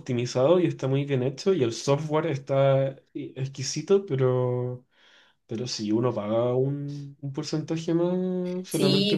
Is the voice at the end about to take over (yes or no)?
yes